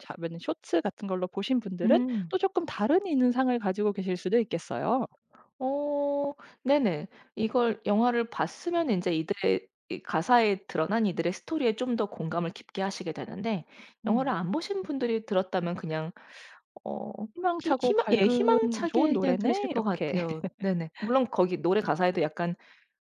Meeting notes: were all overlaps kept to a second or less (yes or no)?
no